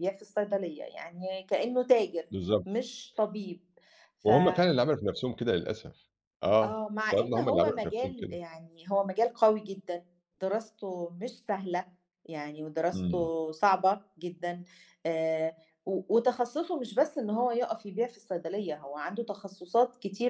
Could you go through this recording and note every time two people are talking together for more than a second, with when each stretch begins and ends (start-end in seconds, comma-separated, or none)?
6.6-8.3